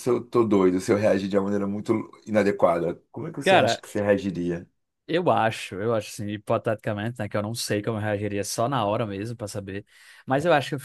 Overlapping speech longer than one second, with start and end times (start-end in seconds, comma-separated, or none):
none